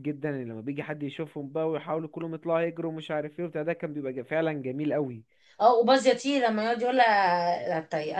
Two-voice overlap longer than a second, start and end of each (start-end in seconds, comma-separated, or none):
none